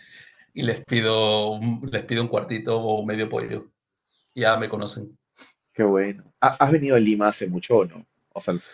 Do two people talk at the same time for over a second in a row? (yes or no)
no